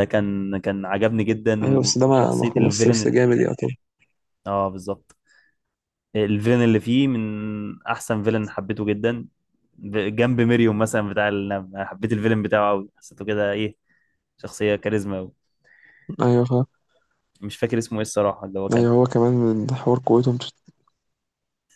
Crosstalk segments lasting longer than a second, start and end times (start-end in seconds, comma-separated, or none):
1.6-3.1